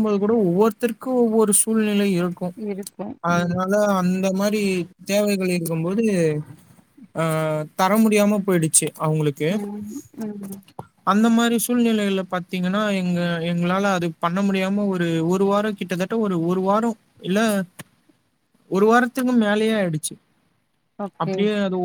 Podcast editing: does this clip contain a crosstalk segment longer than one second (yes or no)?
no